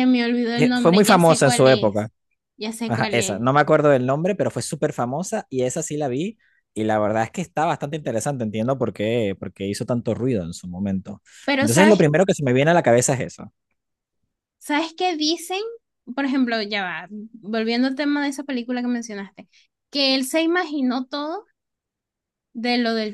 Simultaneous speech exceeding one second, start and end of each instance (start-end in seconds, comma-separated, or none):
0.6-2.1